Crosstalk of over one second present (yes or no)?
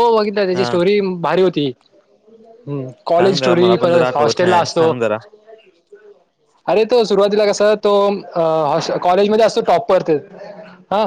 yes